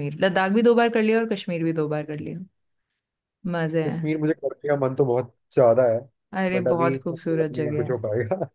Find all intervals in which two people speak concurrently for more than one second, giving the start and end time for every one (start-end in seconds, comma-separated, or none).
6.5-8.0